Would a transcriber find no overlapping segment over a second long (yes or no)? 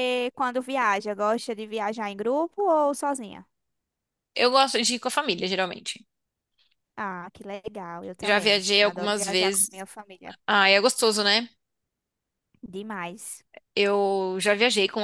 no